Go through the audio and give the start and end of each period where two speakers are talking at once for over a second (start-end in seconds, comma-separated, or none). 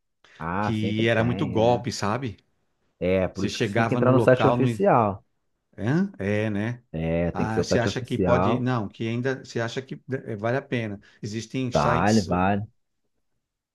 0.6-1.9, 3.3-4.7, 7.3-8.7